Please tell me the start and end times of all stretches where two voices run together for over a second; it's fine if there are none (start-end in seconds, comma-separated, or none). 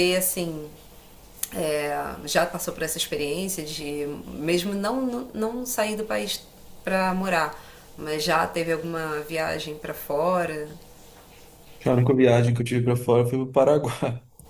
none